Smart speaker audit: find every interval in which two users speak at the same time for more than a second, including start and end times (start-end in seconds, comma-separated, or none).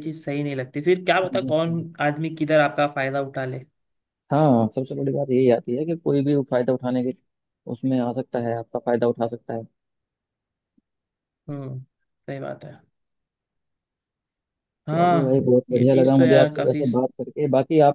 14.9-16.8